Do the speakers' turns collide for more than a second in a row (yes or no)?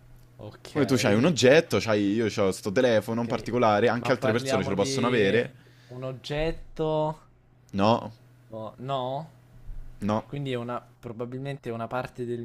yes